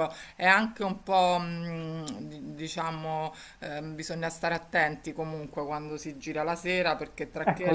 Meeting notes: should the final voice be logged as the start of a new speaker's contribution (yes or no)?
yes